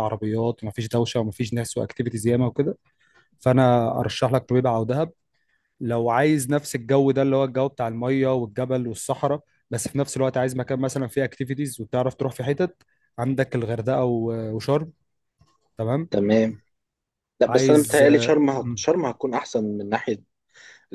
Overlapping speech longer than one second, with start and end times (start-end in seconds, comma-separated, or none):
17.5-18.9